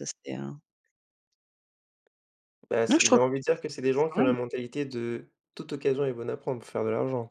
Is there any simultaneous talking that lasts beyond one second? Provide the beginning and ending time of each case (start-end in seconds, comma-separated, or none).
2.9-4.3